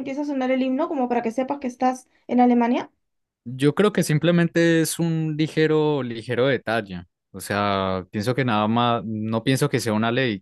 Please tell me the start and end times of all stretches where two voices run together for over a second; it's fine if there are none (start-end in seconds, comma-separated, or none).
none